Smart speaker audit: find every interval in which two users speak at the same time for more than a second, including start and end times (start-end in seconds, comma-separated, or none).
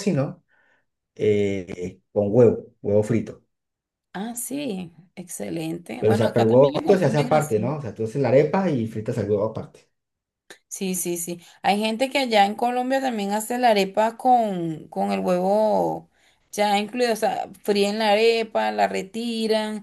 6.0-7.7